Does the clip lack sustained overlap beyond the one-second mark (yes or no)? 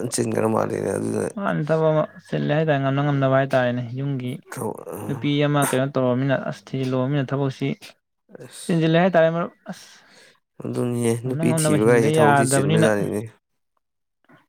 no